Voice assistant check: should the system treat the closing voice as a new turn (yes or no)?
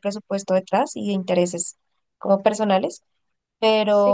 no